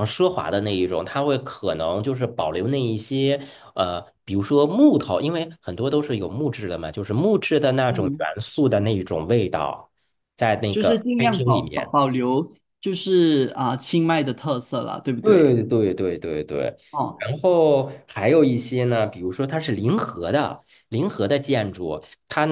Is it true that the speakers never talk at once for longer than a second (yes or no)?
no